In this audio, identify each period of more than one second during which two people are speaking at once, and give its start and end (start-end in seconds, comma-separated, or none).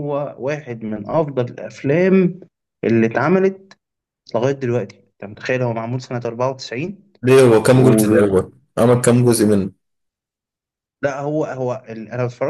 none